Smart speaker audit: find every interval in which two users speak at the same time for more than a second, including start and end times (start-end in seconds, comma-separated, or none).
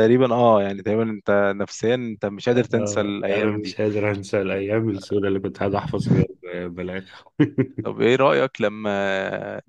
2.5-3.8